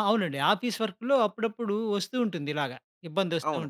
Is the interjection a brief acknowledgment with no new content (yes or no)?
yes